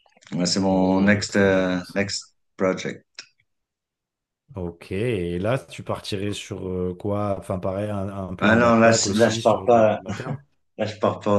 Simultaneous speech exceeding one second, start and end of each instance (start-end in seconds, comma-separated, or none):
0.7-2.0, 8.4-10.0